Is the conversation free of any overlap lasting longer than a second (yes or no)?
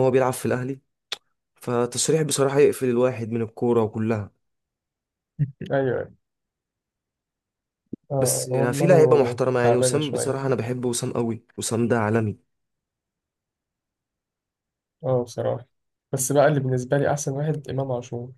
no